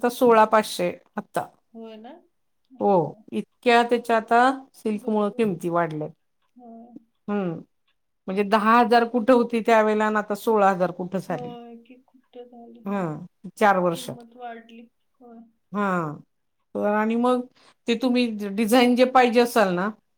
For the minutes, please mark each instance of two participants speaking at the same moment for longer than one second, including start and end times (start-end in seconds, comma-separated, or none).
none